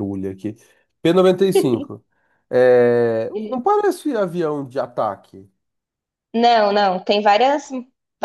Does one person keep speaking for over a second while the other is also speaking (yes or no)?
no